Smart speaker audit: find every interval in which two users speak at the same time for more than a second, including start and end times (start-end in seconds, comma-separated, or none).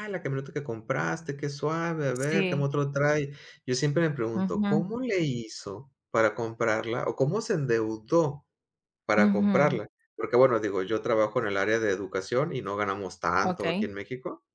none